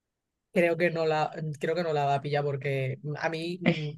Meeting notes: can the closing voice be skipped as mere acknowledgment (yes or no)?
yes